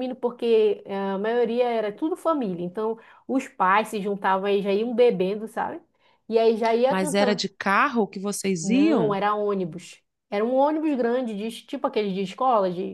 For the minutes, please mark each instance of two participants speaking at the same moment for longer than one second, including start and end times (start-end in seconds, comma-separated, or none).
none